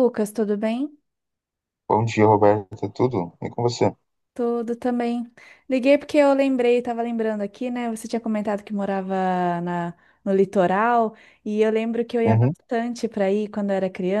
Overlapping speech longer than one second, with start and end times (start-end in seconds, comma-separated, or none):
none